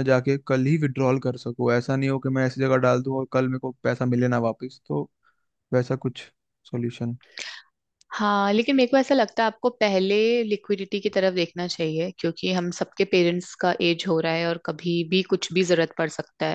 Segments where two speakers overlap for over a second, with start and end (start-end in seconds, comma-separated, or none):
none